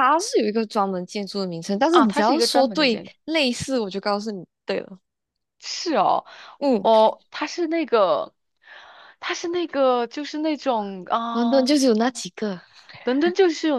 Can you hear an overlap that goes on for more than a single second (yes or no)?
yes